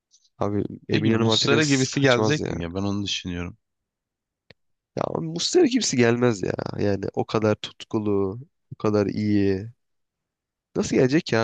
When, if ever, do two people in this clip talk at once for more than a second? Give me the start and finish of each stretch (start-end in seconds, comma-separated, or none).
0.9-2.5